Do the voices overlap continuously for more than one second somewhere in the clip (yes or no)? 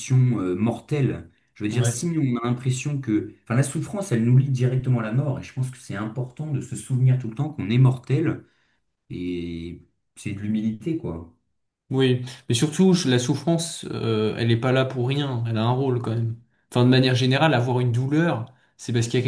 no